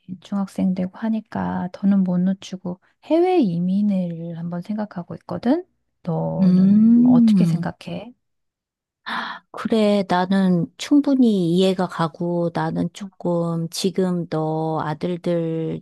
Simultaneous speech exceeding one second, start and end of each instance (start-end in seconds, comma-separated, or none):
6.4-7.7